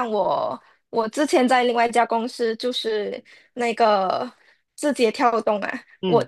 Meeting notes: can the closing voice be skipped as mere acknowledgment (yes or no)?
yes